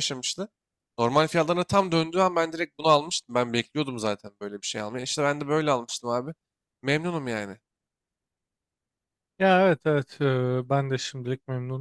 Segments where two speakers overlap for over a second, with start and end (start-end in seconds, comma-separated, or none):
none